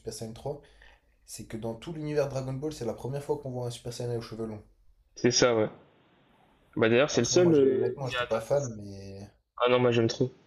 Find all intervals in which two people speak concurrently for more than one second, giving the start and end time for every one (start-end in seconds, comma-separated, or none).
7.1-8.8